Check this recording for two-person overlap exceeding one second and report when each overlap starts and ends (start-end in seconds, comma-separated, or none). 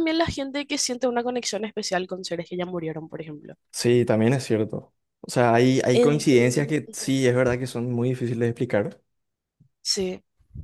5.9-7.2